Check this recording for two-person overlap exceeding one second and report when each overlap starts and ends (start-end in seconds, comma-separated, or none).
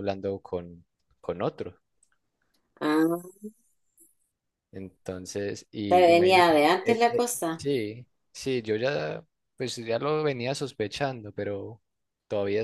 5.9-7.6